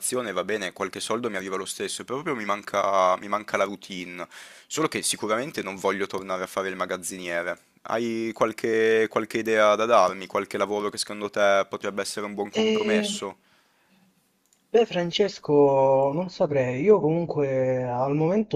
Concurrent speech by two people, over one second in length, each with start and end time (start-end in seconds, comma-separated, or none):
none